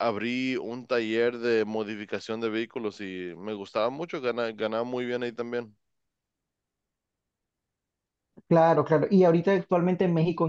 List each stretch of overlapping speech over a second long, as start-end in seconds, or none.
none